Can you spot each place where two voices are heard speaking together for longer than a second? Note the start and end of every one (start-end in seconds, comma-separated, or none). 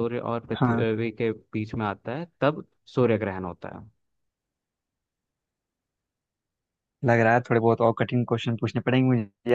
none